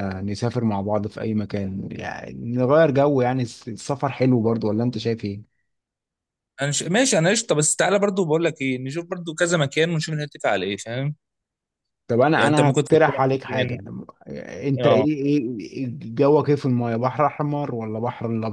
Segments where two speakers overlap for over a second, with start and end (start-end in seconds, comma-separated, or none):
12.3-13.8